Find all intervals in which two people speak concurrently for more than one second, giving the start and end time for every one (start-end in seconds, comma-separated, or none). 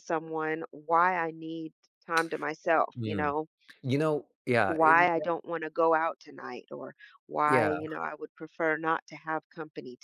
none